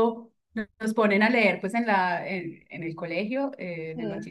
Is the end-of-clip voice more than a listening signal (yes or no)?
no